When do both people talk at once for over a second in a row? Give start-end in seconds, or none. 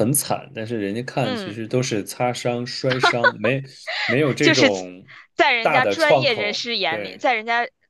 5.6-7.3